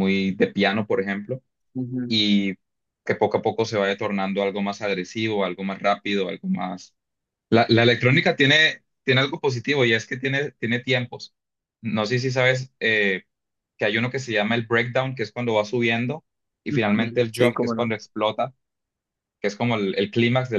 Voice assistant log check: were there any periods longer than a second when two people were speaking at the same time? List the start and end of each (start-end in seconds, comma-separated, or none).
16.7-17.9